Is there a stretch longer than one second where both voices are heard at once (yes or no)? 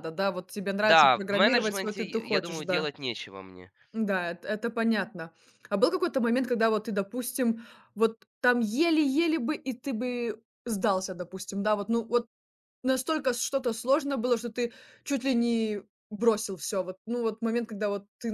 yes